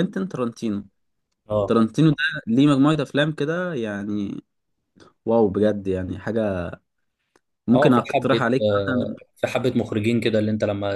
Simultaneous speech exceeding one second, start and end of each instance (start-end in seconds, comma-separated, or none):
7.7-9.2